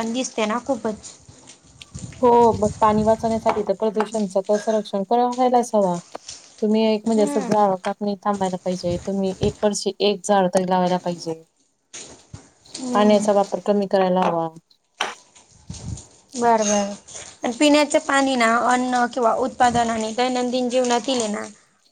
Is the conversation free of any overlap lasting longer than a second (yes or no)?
yes